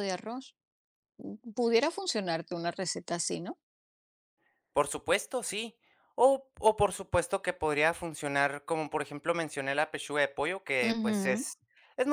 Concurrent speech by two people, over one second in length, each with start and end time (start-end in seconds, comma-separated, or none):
none